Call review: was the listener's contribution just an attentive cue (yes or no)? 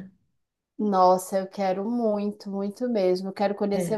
yes